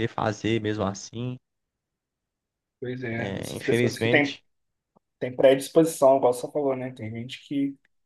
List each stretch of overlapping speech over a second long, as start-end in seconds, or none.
3.1-4.4